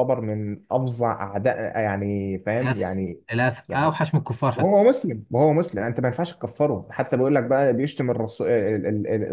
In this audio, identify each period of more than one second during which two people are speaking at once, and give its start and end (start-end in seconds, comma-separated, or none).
none